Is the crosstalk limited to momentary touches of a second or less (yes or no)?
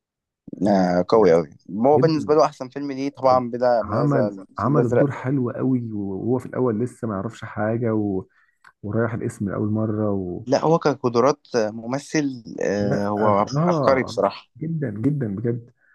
no